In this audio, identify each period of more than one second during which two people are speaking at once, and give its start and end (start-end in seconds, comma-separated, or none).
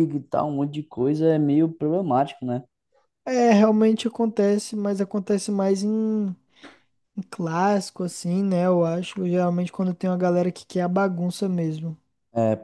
none